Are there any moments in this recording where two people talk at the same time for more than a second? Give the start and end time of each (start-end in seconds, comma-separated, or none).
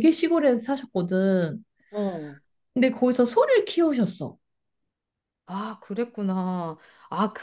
none